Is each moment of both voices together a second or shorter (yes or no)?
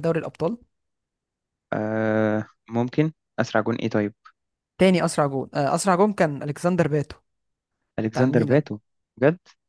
yes